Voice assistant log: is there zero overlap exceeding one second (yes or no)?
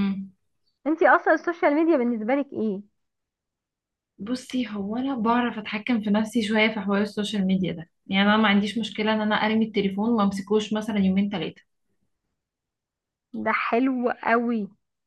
yes